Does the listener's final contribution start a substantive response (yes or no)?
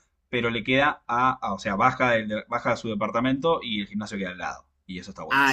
yes